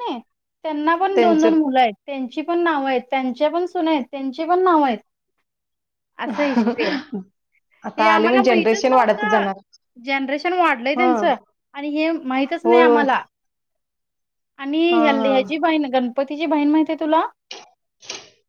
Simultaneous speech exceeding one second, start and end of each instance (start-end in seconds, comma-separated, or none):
8.0-9.4